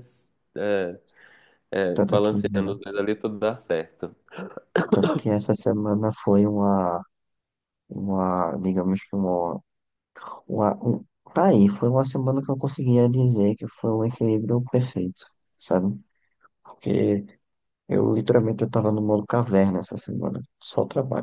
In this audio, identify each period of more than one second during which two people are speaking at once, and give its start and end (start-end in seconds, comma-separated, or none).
none